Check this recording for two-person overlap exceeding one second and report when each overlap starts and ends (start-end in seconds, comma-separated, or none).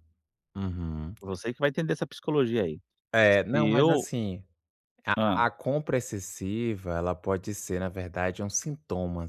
none